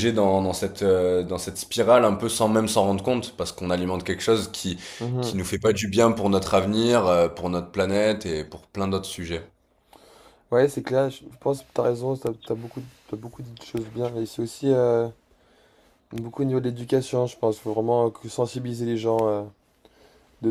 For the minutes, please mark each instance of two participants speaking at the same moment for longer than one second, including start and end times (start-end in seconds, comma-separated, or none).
none